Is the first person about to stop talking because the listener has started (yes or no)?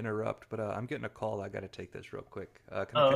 yes